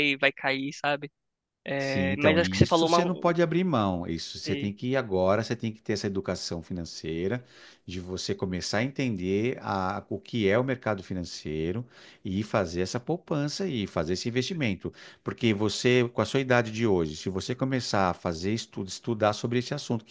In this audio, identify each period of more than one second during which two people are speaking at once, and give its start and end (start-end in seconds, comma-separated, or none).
1.8-3.3